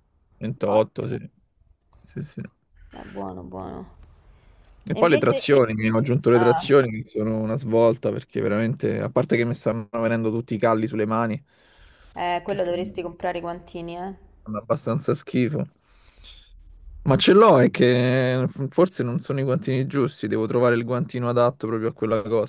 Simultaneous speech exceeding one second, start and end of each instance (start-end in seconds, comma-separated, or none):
none